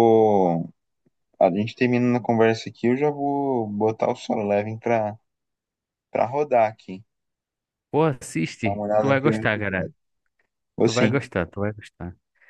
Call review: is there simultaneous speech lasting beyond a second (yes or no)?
yes